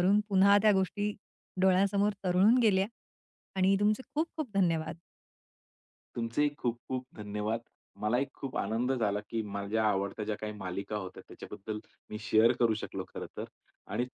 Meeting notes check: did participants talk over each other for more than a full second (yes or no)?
no